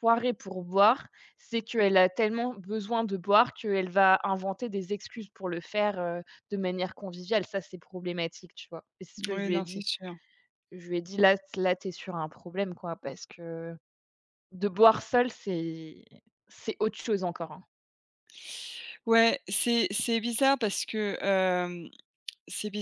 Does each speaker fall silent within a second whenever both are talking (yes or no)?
yes